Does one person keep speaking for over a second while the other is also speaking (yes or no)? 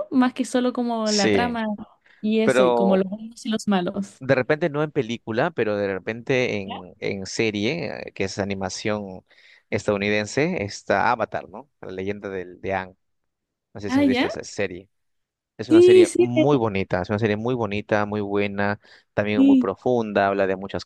no